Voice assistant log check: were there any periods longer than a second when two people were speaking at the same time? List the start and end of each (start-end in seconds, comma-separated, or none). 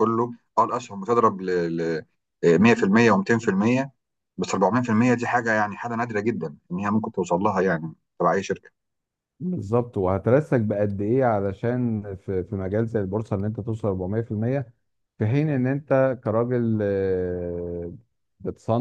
none